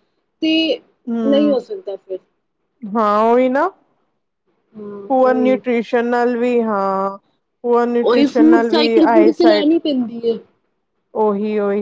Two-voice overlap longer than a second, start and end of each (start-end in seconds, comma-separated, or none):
8.1-9.7